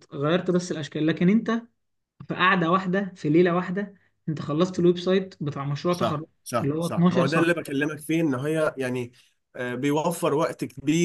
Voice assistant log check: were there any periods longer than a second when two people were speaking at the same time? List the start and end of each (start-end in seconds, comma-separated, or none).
5.9-7.6